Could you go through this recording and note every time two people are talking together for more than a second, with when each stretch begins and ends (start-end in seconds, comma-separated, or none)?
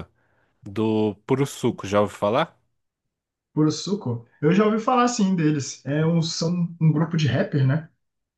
none